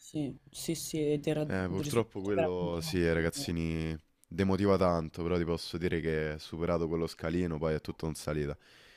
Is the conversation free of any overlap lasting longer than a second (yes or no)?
no